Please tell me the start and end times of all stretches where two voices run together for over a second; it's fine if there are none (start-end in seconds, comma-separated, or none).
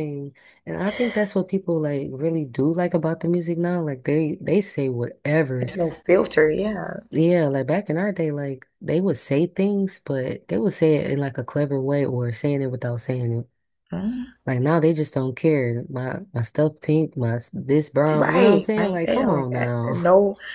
18.2-19.9